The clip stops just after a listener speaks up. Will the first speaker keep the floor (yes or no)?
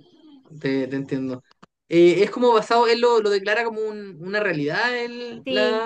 no